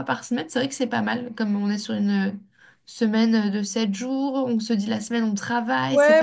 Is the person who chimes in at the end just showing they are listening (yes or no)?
no